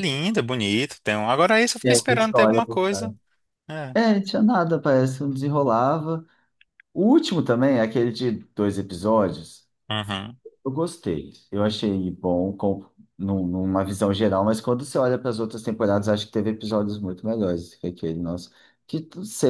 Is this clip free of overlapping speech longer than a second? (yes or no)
no